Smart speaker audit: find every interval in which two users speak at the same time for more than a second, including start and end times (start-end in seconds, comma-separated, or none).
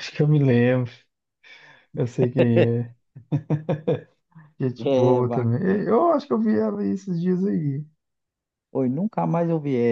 4.8-6.0